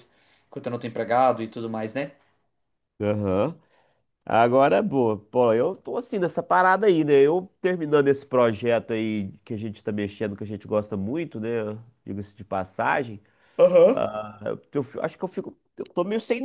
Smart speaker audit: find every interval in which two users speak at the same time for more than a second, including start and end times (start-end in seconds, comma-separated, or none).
none